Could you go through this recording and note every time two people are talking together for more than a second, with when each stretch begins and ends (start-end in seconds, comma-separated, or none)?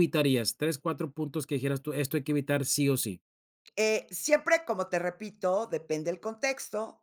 none